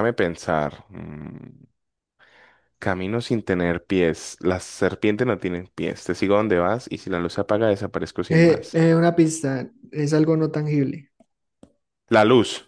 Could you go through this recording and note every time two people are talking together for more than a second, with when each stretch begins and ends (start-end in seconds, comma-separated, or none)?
none